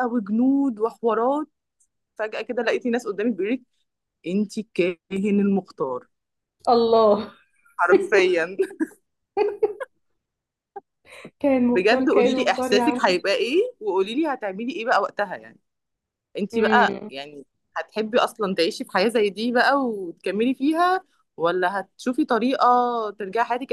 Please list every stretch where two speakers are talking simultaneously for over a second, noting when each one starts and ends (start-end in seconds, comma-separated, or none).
11.7-13.1